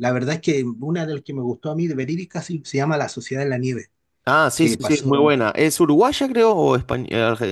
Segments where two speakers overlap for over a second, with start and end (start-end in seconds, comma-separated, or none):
none